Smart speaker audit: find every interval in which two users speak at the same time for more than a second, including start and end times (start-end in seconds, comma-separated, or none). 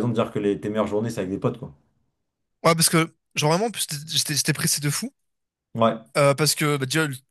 none